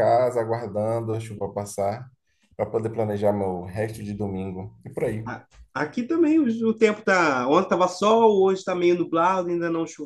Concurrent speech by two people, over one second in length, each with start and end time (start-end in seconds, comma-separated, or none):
none